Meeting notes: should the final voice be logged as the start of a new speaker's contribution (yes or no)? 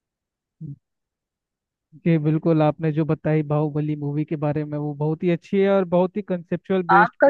yes